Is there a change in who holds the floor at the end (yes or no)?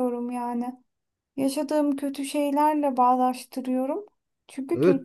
yes